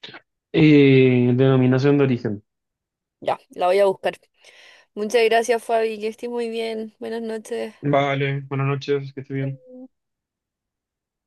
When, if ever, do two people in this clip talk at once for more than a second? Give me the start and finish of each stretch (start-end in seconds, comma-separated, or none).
none